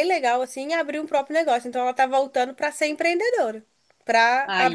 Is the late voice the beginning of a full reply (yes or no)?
no